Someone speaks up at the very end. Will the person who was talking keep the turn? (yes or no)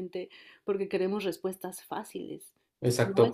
no